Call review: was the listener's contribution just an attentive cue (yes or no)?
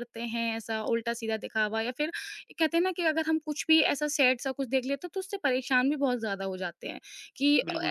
no